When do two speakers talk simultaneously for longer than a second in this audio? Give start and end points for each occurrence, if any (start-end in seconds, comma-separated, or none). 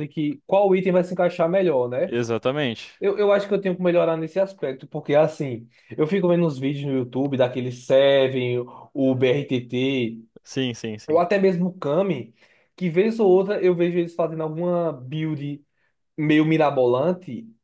none